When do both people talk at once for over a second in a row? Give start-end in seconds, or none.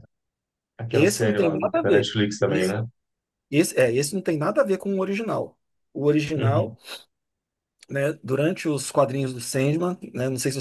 0.9-2.8